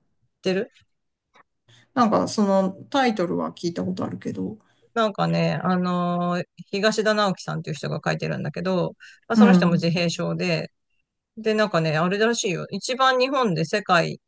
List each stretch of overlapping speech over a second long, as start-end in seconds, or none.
none